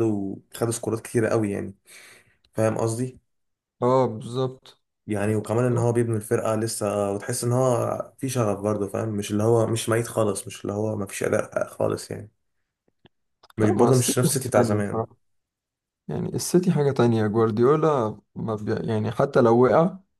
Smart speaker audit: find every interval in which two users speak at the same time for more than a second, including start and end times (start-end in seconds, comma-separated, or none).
13.6-15.0